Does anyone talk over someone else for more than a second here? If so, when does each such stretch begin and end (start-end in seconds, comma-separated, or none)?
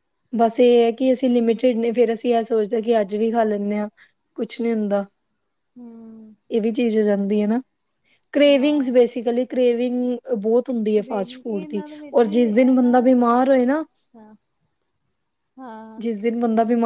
11.0-12.9